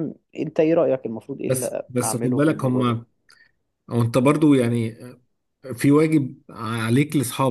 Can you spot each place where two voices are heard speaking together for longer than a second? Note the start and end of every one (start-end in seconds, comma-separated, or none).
1.5-3.0